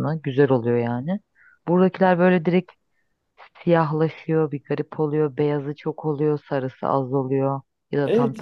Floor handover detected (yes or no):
yes